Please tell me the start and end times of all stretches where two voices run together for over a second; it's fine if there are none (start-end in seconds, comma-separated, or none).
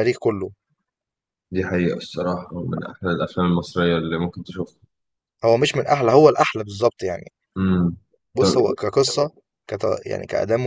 none